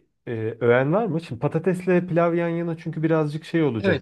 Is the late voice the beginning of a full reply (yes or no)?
yes